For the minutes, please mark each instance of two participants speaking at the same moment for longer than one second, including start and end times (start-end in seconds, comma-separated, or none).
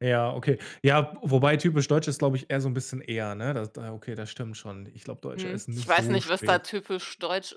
5.3-6.6